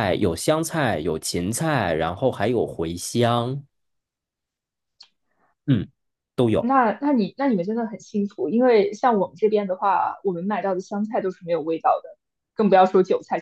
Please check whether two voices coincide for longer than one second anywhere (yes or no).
no